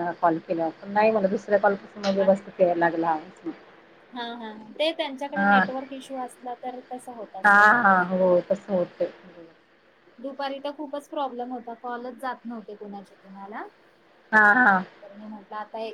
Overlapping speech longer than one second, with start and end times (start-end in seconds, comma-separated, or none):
none